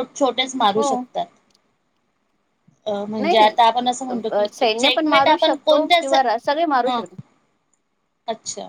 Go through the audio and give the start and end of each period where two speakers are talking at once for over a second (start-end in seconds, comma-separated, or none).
4.5-6.1